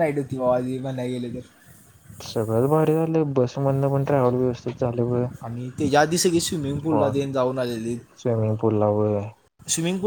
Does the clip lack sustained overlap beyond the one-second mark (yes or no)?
yes